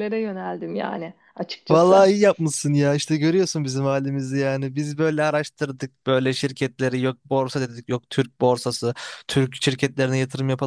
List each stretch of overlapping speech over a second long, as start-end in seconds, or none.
none